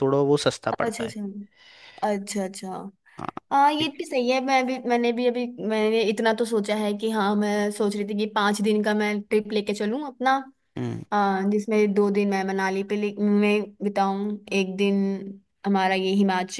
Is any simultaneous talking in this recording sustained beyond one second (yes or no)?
no